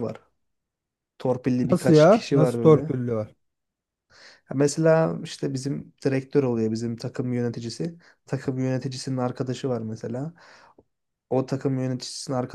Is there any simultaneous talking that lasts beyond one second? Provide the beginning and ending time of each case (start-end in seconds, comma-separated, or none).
1.7-2.9